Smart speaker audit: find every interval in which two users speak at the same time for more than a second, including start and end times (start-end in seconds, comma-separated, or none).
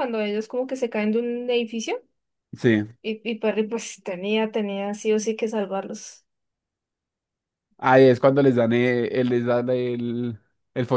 none